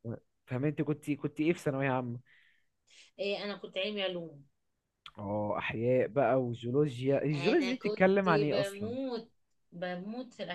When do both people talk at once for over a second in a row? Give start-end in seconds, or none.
7.3-8.9